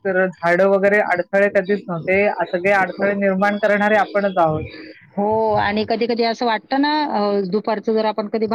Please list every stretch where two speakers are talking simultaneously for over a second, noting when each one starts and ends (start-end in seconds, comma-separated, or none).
none